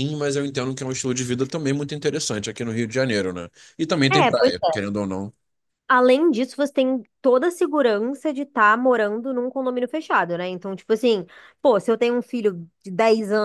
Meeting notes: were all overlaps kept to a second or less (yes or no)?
yes